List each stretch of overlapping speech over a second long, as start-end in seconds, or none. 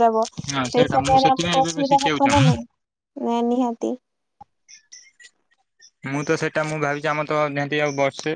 0.5-2.2